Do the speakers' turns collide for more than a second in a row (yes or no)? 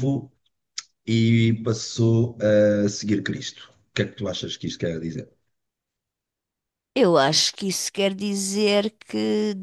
no